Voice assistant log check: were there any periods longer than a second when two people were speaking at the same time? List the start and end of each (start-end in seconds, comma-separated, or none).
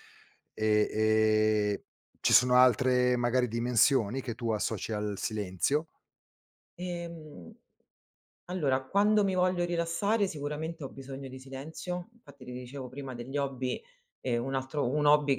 none